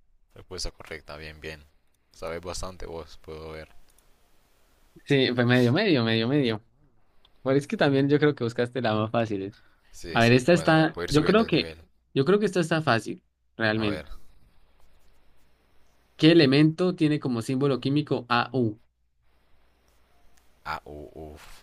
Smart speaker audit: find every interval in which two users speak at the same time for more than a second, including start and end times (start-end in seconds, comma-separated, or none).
10.1-11.7